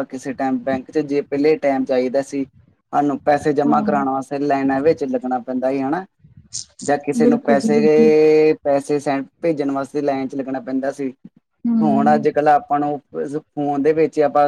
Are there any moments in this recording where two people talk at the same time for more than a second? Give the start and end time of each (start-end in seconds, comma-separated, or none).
none